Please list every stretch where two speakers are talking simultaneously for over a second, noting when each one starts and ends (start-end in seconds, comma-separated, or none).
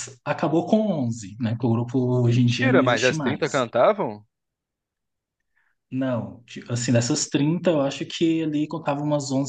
2.3-3.7